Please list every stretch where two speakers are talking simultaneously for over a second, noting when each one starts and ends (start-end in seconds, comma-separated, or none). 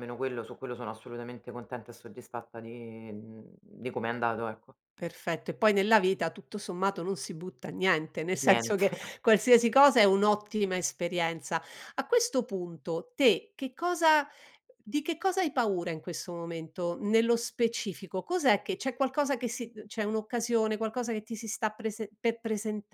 none